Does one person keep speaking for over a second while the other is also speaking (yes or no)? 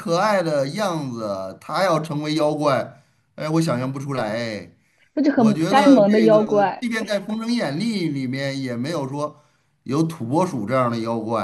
yes